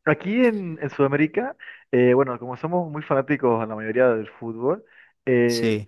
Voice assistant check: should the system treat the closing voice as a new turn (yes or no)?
no